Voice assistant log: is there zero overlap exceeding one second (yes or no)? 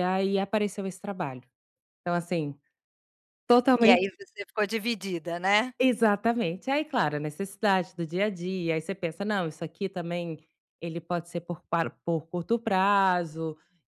yes